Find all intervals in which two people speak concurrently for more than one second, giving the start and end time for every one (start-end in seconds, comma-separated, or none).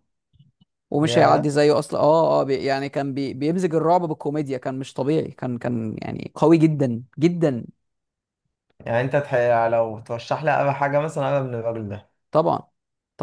none